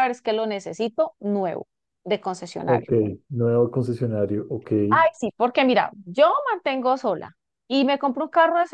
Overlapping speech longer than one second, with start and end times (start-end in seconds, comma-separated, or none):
none